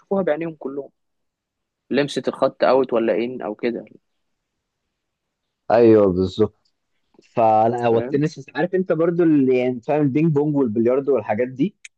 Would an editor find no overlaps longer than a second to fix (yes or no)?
yes